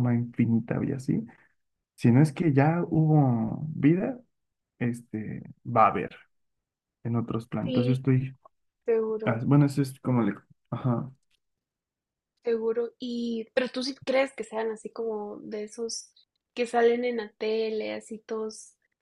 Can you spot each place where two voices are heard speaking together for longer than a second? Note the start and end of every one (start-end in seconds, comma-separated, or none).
none